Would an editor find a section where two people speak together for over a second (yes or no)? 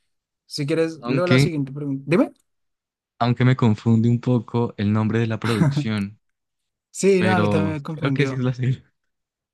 yes